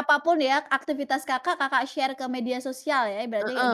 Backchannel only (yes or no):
no